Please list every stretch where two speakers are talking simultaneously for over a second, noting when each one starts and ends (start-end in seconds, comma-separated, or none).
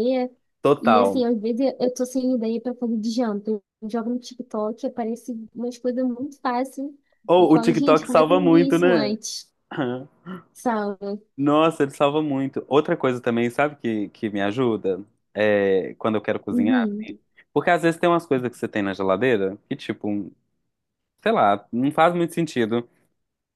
7.4-9.2